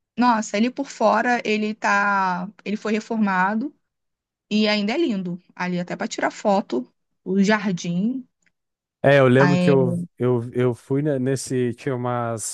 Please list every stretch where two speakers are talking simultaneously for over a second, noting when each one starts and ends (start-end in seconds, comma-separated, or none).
none